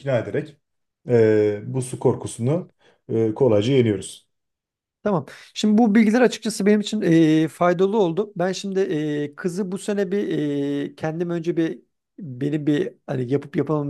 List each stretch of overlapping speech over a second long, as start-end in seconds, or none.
none